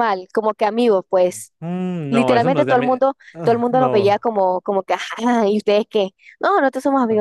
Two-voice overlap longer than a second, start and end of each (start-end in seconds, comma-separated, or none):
2.1-4.2